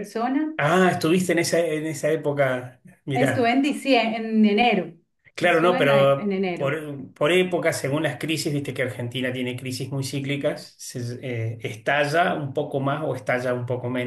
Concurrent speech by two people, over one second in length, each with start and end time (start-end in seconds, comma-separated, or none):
5.4-6.7